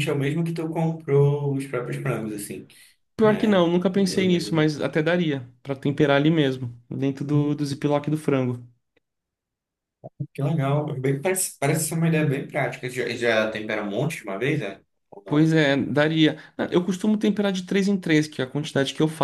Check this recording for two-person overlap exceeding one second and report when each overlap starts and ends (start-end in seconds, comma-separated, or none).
3.2-4.7